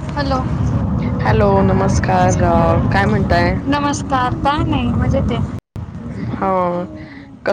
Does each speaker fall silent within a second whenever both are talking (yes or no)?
yes